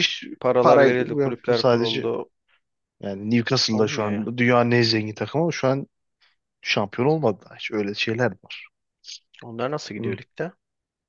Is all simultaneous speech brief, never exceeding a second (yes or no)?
no